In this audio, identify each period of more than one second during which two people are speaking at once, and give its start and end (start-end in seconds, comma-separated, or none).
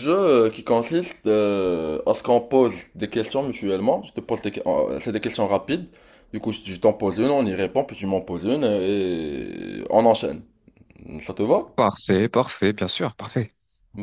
none